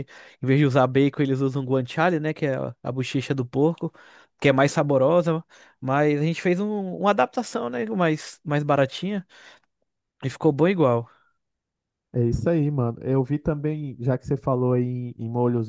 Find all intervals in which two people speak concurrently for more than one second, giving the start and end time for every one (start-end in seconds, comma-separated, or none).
none